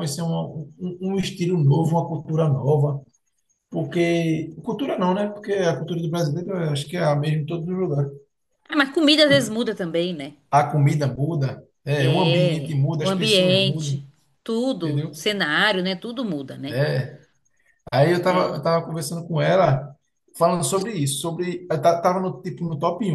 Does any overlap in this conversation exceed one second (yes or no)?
yes